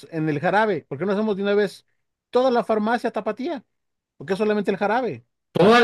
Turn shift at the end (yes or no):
no